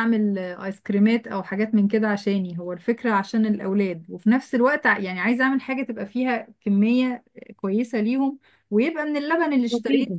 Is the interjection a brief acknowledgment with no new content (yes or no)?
yes